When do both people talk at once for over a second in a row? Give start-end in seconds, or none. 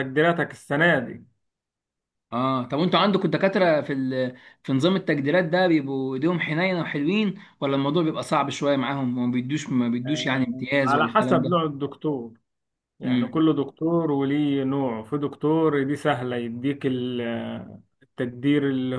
10.1-11.6